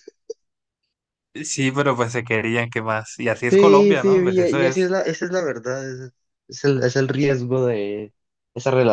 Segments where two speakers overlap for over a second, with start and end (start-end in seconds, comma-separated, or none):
3.5-4.9